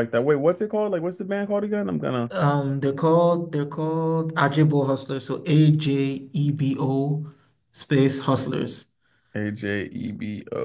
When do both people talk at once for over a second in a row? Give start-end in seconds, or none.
none